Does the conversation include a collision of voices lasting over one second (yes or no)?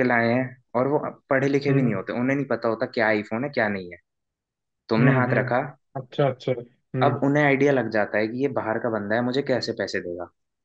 no